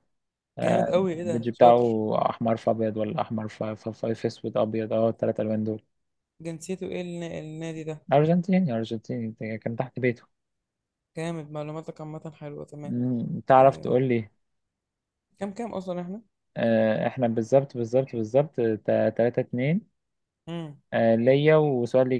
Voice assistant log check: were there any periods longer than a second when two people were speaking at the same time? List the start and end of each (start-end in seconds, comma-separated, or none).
0.6-2.0